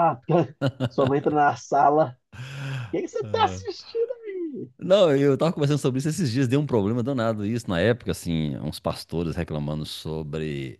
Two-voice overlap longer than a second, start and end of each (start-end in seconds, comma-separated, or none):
none